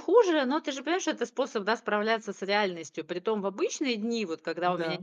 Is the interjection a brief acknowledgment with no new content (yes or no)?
yes